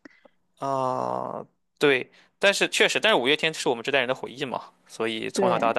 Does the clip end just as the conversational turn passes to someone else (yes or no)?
no